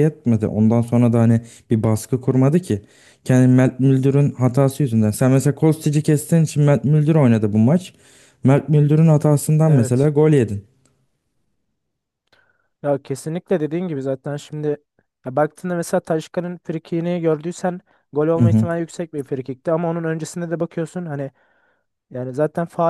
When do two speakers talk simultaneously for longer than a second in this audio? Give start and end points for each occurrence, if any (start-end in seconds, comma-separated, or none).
none